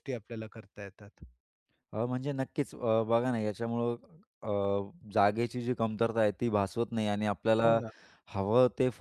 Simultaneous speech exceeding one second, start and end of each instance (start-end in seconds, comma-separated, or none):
none